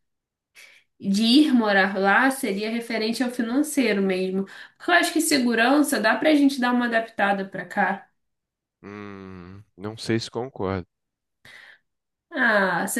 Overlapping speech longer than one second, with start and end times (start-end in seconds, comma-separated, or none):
none